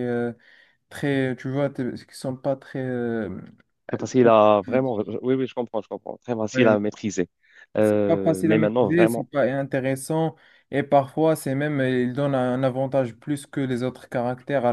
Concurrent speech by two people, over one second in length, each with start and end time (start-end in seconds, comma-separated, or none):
7.8-9.3